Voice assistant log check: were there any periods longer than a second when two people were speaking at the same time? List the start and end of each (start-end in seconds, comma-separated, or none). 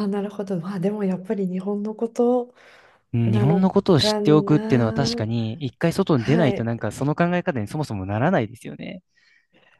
3.2-5.2